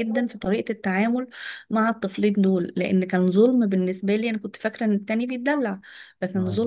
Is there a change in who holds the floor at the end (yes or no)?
no